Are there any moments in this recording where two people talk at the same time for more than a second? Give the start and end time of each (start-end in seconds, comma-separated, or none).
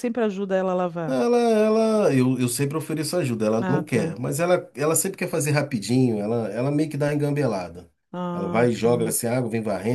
none